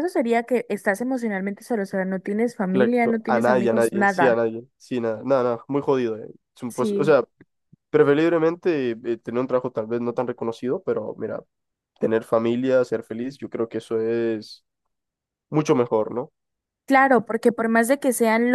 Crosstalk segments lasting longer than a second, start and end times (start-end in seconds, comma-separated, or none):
2.7-4.4